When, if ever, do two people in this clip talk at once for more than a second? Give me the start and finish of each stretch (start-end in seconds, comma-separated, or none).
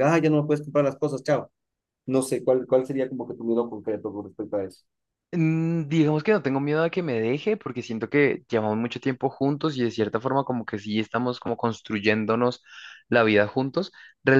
none